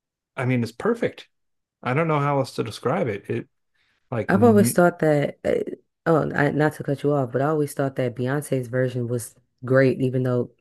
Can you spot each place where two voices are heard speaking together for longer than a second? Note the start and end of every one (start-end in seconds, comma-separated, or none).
none